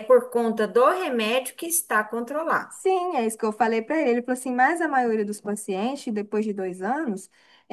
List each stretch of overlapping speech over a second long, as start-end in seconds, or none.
none